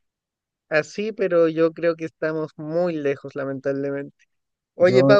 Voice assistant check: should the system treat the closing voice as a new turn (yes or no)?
no